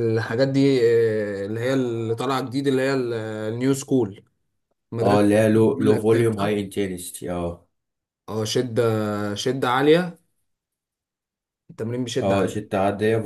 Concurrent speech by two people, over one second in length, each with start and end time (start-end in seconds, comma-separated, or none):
5.0-6.5